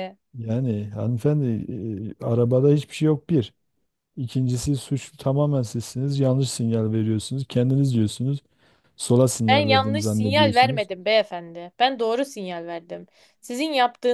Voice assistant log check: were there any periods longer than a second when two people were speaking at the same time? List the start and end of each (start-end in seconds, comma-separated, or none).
9.5-10.9